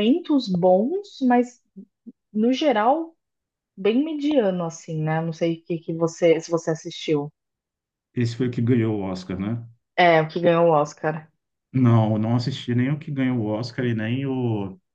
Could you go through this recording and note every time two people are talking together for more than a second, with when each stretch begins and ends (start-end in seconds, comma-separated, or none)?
none